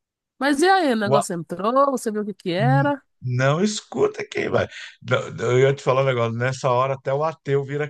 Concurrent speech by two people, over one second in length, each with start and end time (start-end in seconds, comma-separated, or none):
none